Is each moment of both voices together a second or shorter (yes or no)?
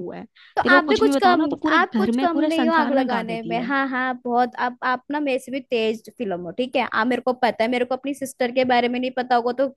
no